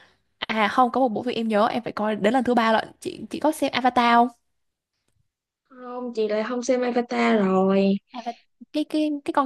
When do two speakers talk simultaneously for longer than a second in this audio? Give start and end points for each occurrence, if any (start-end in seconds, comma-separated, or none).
none